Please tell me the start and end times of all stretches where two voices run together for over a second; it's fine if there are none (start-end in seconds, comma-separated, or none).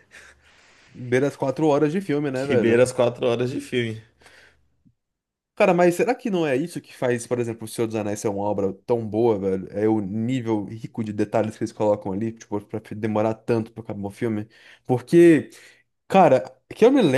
none